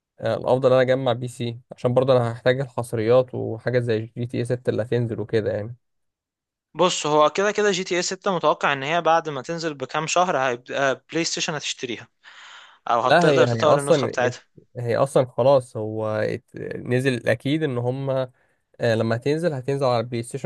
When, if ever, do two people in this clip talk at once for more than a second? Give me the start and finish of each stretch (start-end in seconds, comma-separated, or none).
13.1-14.3